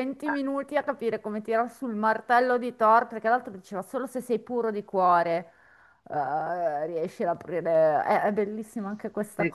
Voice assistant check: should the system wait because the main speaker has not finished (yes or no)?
no